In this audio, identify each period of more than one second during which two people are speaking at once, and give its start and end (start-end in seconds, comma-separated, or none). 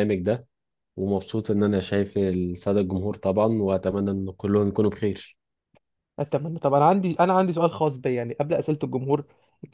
none